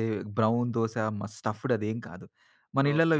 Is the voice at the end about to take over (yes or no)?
yes